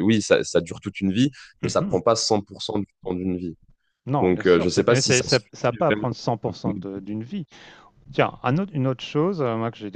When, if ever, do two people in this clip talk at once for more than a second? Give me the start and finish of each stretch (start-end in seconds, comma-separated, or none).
4.2-6.1